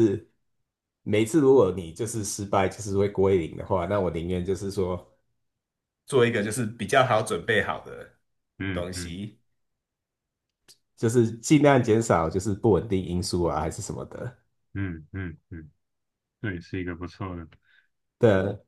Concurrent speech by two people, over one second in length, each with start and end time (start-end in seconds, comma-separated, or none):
none